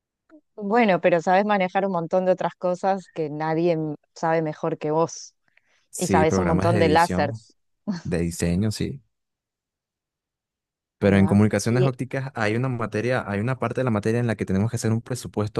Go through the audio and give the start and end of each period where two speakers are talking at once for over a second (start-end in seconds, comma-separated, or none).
6.0-7.4